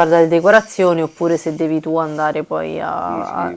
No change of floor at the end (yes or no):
no